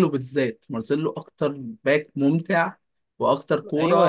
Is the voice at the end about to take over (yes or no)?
yes